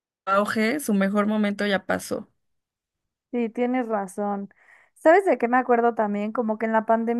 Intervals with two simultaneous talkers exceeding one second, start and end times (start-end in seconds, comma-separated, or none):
none